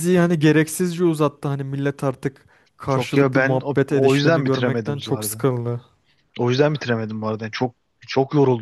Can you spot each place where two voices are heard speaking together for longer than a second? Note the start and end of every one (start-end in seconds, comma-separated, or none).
2.9-5.5